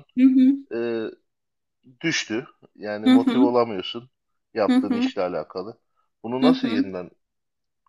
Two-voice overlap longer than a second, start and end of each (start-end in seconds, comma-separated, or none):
none